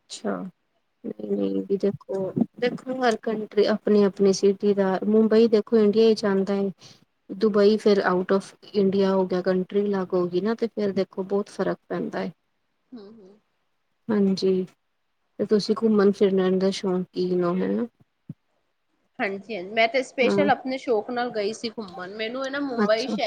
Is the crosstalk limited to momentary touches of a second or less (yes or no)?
yes